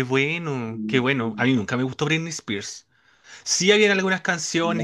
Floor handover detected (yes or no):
no